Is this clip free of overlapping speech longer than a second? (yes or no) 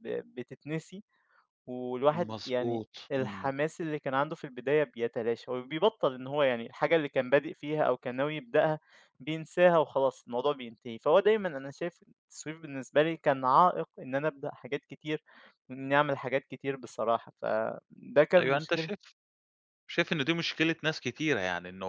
no